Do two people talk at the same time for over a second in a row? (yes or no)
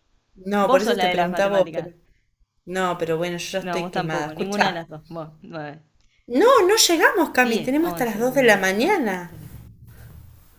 yes